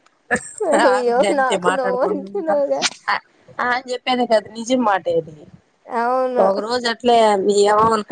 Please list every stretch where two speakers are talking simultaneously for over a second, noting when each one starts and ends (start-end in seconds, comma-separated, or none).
0.8-2.5